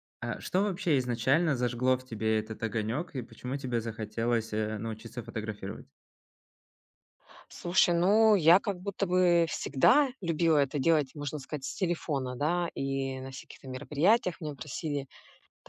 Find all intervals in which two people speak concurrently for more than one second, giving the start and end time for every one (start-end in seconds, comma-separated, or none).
none